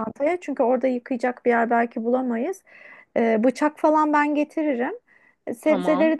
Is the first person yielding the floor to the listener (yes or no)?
no